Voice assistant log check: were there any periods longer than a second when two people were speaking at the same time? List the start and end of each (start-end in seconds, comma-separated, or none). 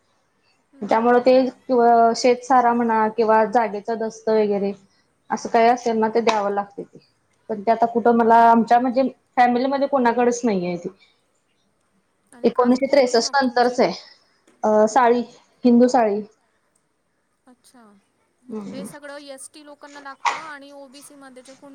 12.5-13.8